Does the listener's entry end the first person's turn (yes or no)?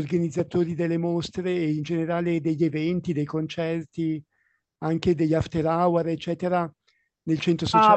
yes